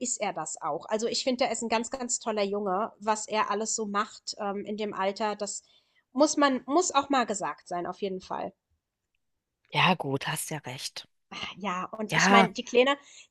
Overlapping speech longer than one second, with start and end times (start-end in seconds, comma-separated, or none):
none